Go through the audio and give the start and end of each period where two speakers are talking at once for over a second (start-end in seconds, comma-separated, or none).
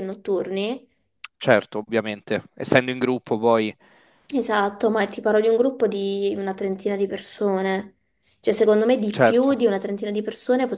none